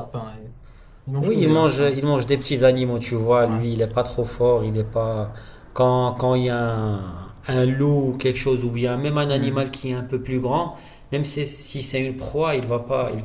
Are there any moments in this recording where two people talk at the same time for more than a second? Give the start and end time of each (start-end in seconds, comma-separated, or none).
1.2-2.4